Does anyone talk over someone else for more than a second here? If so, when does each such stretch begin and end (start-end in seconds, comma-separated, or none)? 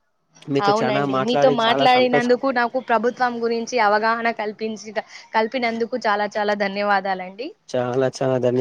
0.7-2.3